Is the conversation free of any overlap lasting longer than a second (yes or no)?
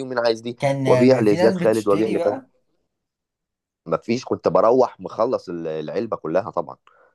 no